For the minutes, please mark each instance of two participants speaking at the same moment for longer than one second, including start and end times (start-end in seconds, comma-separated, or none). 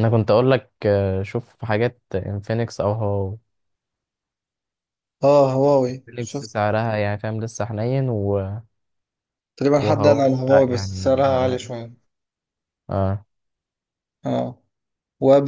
9.8-11.7